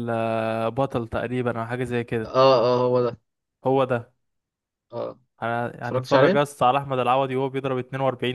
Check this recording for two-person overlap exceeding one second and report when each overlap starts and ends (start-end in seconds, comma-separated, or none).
none